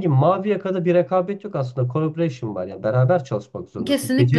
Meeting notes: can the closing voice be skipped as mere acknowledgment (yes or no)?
yes